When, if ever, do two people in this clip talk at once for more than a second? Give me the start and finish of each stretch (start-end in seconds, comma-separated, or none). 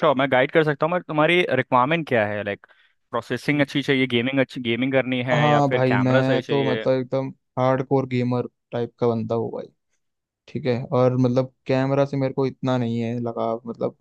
5.3-6.8